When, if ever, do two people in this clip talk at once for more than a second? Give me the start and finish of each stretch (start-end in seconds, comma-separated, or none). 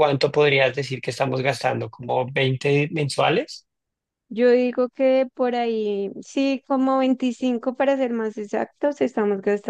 none